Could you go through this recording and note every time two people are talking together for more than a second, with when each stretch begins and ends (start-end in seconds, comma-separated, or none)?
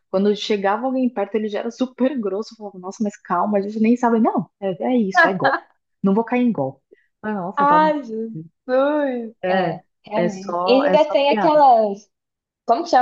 9.4-11.6